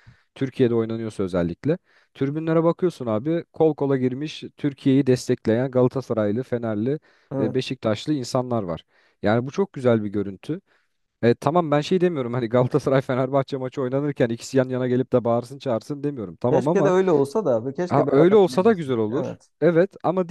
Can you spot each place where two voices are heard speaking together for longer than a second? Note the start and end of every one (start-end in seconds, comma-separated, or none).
17.9-19.5